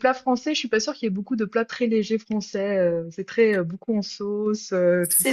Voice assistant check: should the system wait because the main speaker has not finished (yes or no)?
no